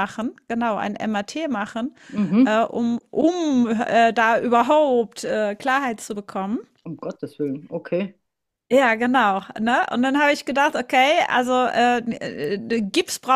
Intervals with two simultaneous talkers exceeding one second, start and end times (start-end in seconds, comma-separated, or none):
none